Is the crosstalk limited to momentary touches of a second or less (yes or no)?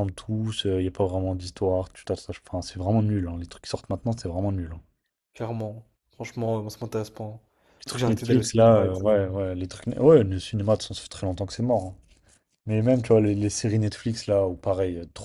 no